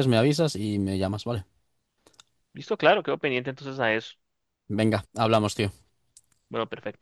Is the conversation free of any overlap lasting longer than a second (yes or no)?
yes